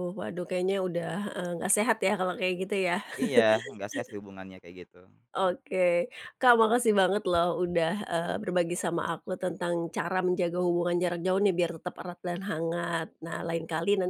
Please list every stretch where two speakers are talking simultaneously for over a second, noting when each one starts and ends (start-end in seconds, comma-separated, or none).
none